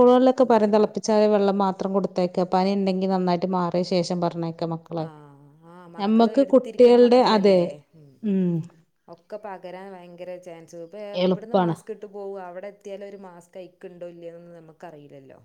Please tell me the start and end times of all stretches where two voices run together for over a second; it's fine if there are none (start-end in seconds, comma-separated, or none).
6.0-7.6